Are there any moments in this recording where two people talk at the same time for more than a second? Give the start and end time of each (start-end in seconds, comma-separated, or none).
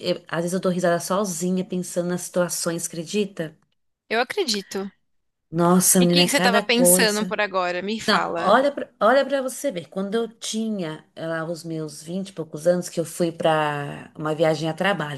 6.0-7.4